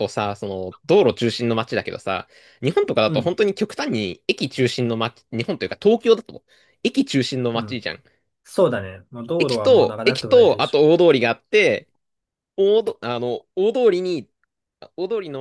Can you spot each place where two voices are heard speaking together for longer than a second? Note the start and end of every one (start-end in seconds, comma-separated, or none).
9.4-10.8